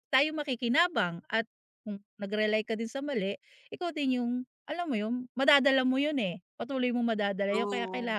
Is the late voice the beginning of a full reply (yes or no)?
no